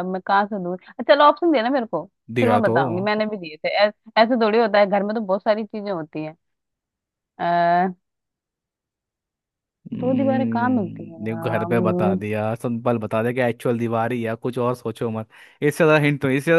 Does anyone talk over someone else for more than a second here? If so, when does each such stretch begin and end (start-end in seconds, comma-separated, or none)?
10.0-12.2